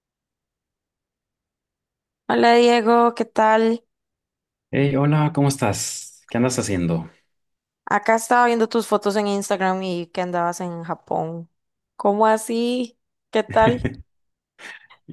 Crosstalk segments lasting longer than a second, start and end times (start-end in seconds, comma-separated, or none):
none